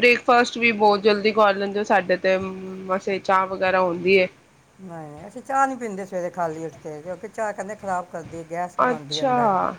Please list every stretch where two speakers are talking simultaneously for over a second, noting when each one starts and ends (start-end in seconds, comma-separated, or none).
none